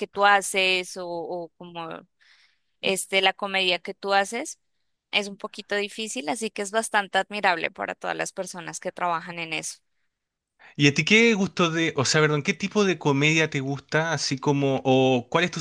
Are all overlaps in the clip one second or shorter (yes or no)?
yes